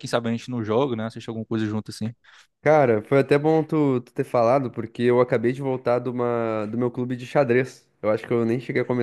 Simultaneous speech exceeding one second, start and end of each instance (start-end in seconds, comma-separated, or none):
none